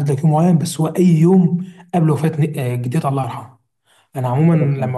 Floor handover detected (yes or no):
no